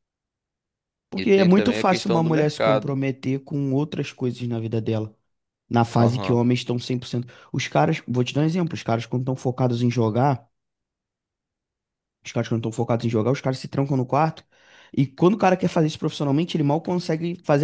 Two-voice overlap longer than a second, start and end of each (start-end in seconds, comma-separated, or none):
1.2-2.9